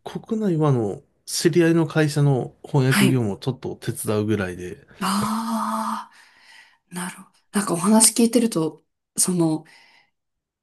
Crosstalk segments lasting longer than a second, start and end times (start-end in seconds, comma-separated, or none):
none